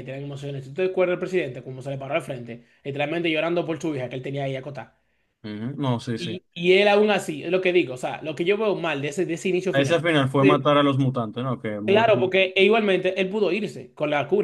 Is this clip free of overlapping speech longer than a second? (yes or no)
yes